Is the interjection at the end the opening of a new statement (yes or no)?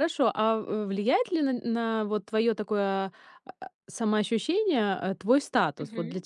no